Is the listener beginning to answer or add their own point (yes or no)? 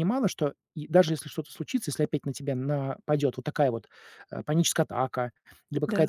no